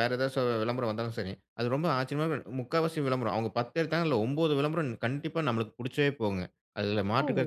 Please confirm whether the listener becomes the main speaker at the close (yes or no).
no